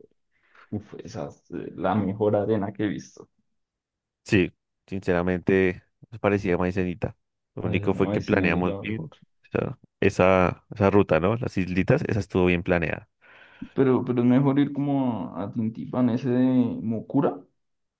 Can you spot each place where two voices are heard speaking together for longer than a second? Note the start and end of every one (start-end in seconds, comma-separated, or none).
7.6-9.1